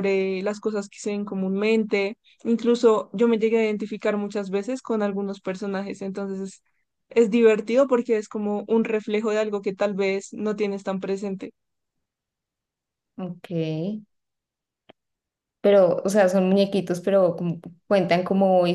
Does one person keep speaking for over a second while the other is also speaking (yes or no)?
no